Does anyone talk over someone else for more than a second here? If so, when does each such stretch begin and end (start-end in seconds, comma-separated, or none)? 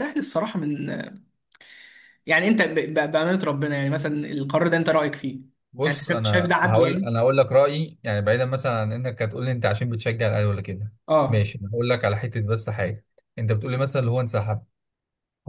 5.8-7.1